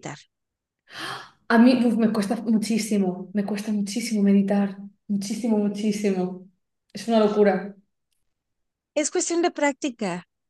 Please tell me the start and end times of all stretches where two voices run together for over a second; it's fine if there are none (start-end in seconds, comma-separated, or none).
none